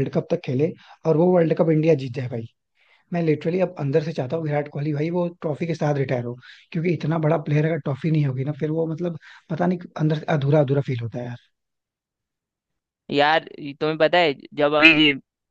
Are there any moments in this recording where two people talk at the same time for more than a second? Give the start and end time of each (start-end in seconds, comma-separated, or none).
none